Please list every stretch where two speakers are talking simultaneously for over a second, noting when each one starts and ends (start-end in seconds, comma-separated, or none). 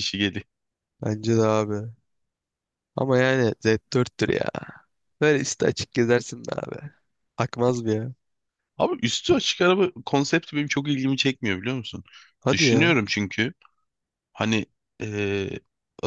none